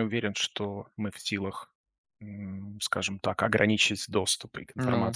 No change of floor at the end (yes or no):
yes